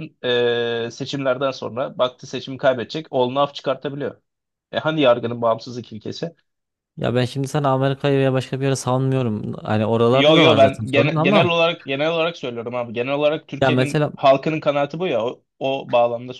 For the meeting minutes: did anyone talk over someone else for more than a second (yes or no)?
yes